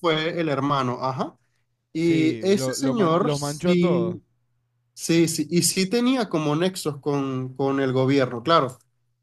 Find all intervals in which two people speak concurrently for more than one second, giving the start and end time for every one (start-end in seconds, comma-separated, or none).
1.9-4.2